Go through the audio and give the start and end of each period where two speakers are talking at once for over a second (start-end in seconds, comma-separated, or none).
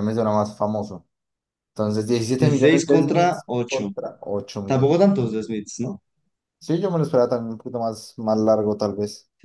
2.4-3.9